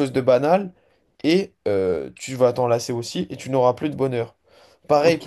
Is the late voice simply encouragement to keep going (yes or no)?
no